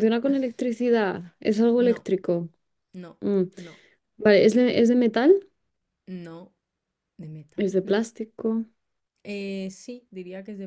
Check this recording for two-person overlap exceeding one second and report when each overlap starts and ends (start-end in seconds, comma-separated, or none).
none